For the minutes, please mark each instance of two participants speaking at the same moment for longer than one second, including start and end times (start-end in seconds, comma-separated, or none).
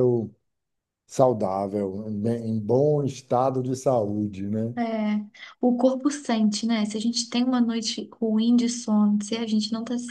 none